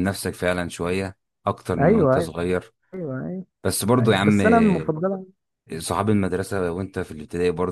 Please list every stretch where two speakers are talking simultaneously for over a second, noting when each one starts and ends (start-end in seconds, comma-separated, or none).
none